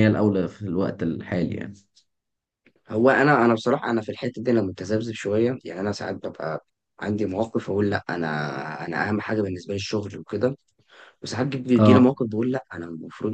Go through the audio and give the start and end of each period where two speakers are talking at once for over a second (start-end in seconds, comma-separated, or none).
none